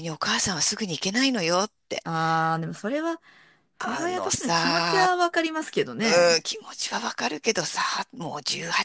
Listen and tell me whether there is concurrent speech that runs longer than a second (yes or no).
yes